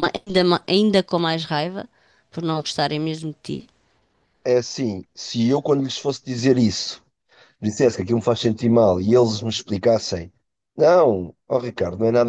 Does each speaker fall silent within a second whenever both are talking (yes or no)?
yes